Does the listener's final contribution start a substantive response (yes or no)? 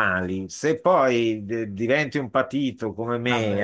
no